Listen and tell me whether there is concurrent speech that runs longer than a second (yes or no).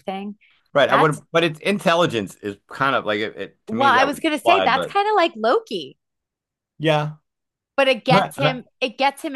yes